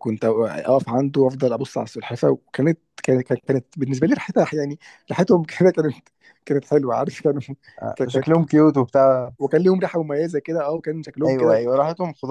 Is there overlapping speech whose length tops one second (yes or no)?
no